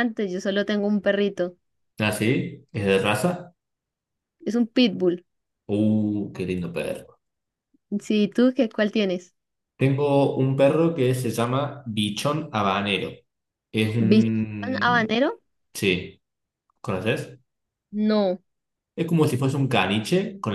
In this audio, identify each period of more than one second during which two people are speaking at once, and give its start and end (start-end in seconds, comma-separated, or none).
14.0-15.2